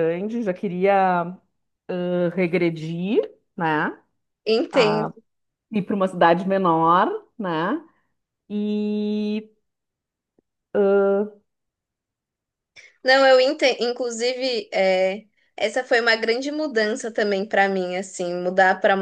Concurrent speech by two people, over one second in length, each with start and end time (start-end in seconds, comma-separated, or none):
none